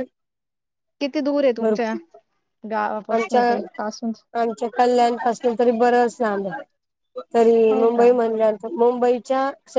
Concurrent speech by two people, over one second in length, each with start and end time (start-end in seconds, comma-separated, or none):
none